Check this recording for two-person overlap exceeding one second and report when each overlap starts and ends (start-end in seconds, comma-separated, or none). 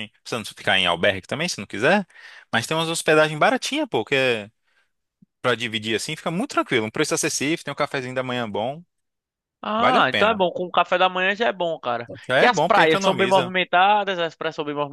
12.3-13.5